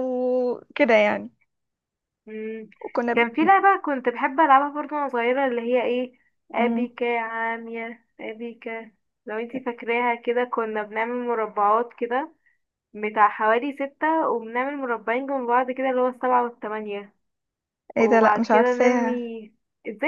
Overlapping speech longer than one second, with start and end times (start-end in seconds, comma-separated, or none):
18.0-19.2